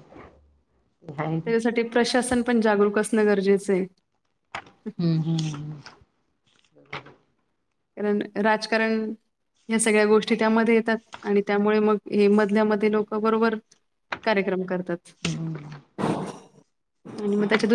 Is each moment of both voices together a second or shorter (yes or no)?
yes